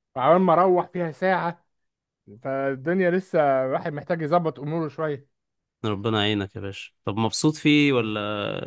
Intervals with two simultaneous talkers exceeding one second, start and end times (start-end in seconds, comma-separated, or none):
none